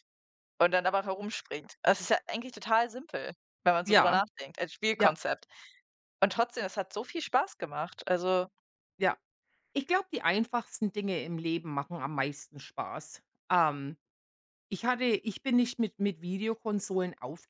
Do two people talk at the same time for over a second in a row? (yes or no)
no